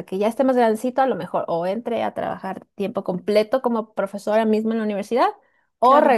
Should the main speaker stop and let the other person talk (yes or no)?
no